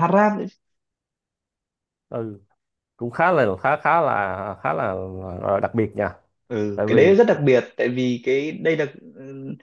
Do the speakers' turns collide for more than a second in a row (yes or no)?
no